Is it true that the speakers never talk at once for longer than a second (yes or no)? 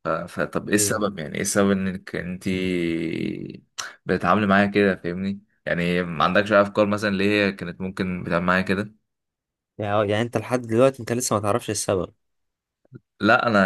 yes